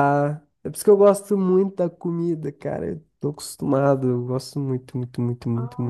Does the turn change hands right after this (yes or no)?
yes